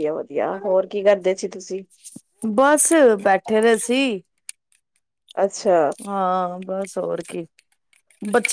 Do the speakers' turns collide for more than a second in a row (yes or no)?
no